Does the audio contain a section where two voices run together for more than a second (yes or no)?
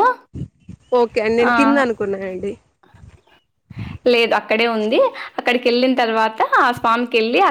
no